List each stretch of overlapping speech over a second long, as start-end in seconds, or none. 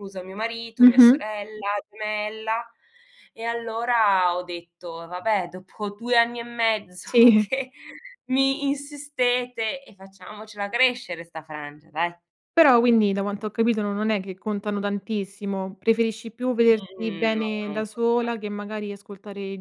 16.7-18.3